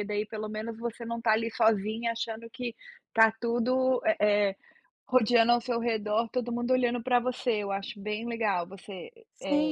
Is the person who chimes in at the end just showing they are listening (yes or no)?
no